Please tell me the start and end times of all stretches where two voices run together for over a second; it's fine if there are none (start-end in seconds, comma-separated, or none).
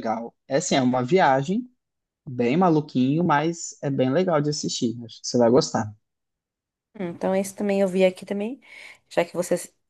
none